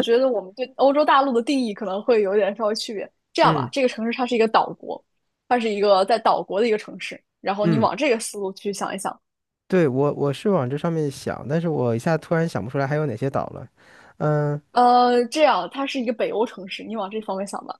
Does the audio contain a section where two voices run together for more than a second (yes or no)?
no